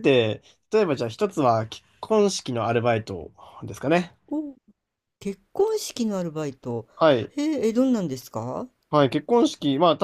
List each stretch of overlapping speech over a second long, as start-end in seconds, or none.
none